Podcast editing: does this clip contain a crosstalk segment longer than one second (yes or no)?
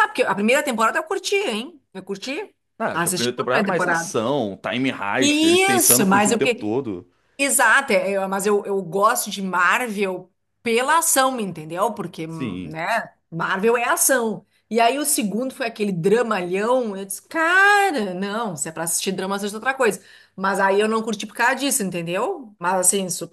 yes